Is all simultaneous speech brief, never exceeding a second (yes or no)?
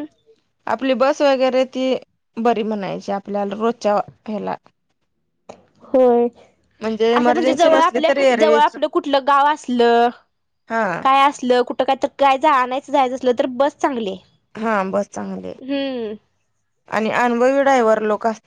no